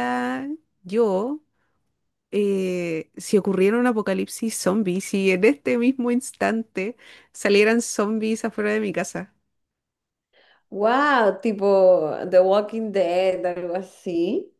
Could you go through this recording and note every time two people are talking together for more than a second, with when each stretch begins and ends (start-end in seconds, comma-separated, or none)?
none